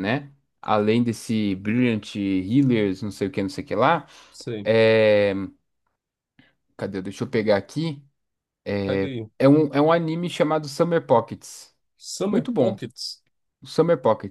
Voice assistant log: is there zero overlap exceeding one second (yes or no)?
yes